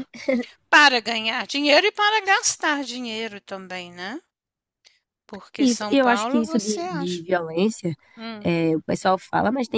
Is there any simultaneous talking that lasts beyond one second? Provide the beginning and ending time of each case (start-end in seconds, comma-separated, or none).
5.6-7.2